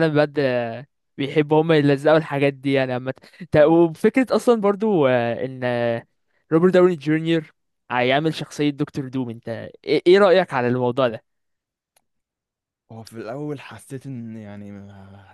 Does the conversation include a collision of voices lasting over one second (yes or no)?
no